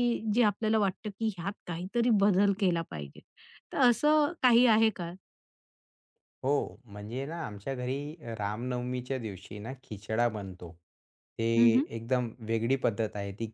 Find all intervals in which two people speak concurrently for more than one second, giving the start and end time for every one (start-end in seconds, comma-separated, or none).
none